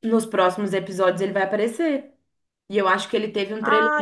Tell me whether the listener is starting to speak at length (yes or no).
no